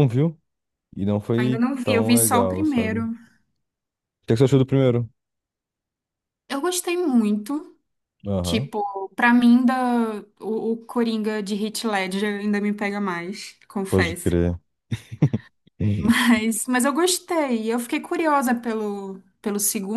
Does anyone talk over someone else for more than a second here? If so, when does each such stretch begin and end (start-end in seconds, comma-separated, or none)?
1.4-3.0